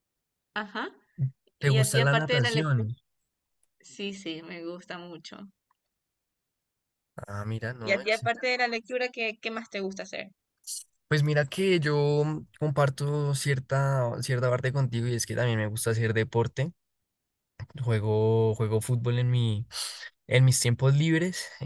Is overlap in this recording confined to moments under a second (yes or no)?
no